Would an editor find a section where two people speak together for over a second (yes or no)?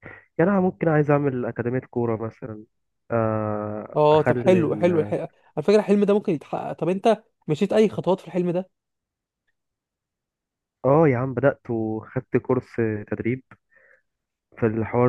yes